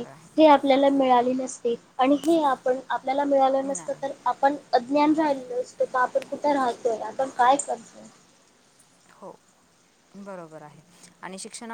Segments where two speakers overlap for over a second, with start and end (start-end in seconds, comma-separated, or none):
none